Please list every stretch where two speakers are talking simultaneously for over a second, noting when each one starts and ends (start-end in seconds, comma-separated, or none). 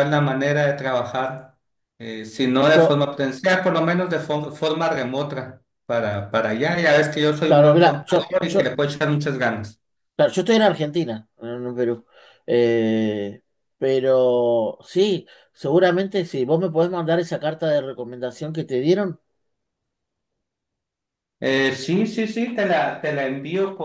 7.4-8.8